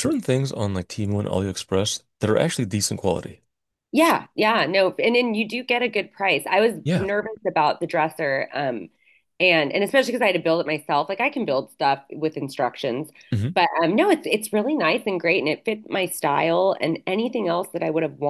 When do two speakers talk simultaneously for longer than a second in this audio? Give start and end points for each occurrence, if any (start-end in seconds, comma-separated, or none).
none